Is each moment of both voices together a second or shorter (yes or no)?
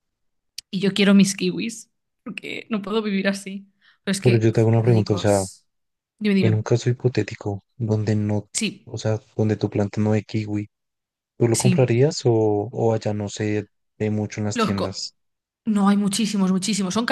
no